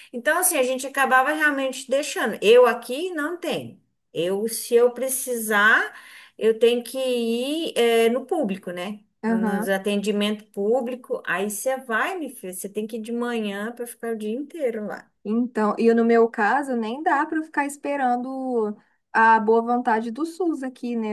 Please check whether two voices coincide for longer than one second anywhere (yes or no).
no